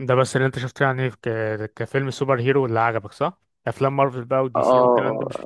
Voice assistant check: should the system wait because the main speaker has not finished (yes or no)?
no